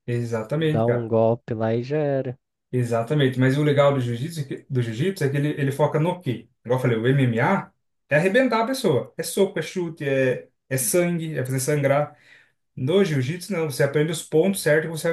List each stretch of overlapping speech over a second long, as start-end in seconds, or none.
none